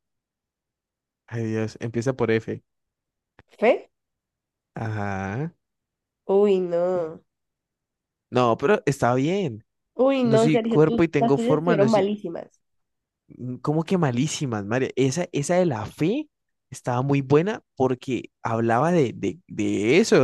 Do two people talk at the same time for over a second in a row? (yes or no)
yes